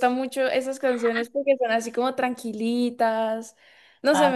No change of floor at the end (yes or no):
no